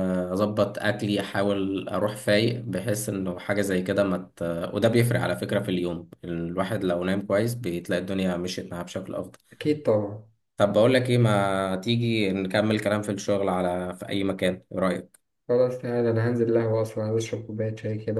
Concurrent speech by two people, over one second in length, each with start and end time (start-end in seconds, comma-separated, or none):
none